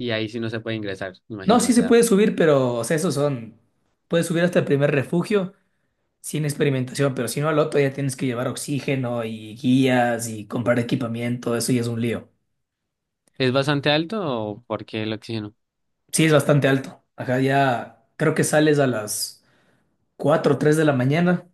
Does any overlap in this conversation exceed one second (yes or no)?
no